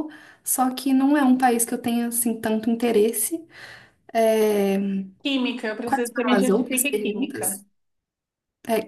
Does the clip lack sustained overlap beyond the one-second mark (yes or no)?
no